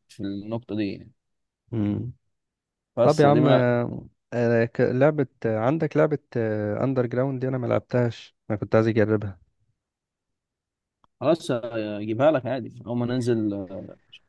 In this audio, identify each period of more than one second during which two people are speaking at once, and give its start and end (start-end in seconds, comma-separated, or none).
none